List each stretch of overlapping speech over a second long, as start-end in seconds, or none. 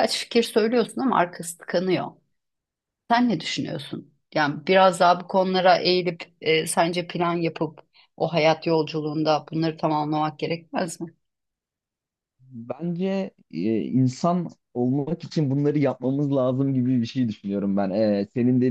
none